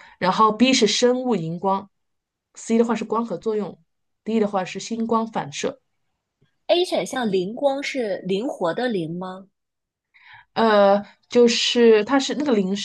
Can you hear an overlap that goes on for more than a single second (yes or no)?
no